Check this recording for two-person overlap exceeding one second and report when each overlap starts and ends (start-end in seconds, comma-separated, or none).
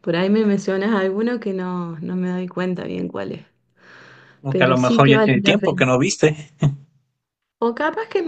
4.5-5.9